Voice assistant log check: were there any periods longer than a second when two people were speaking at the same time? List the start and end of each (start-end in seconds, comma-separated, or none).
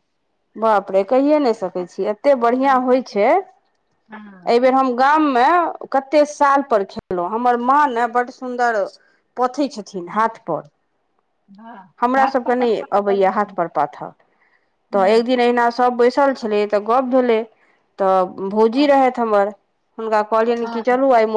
12.2-13.6